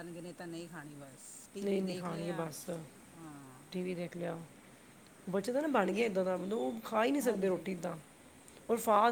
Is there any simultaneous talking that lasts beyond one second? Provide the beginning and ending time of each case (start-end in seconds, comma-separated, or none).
none